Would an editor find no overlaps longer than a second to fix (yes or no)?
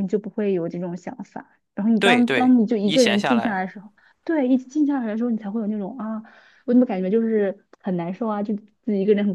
no